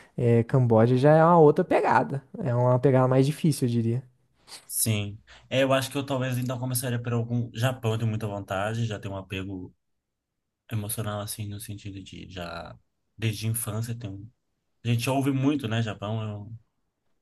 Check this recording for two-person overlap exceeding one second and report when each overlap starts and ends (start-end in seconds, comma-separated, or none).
none